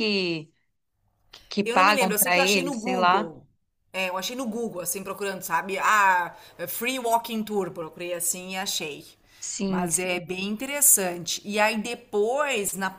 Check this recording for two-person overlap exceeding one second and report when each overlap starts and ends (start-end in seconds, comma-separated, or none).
1.6-3.3